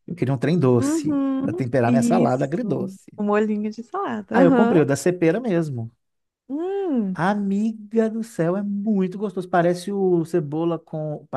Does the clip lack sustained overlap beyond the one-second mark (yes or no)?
no